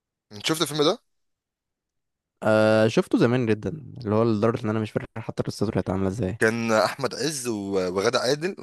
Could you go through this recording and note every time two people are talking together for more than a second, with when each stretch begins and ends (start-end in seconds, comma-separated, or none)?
none